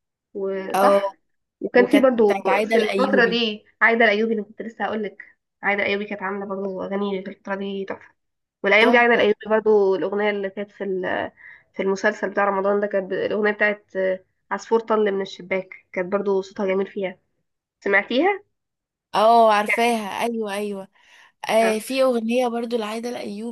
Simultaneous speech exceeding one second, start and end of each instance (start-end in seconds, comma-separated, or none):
1.7-3.4